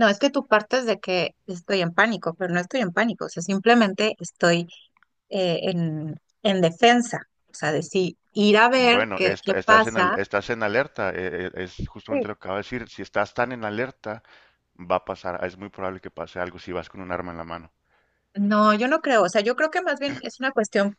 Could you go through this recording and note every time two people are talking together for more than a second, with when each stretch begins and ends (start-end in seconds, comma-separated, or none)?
8.8-10.2